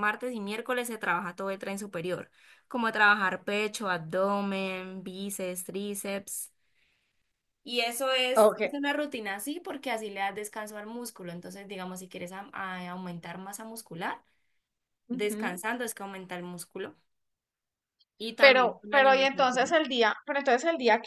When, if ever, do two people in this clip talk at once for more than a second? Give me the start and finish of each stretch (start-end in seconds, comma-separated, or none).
18.4-19.8